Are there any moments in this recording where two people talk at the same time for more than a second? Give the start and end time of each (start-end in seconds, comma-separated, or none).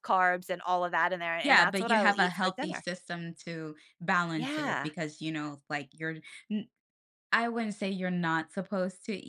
1.4-2.8